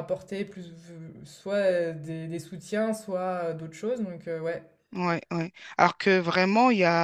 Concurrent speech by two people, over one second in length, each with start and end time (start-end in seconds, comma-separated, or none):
none